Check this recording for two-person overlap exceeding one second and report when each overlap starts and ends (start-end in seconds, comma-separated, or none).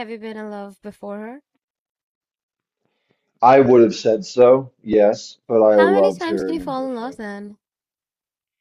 5.7-7.2